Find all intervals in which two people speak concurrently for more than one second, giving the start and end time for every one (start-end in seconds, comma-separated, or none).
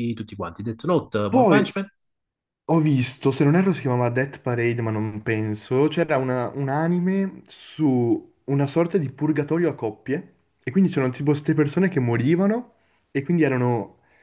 none